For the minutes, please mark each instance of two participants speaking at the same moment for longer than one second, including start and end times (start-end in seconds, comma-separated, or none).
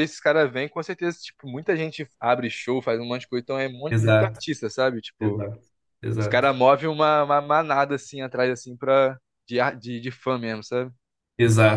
none